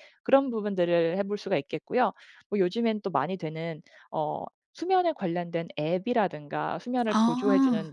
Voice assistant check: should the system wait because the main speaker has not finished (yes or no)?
yes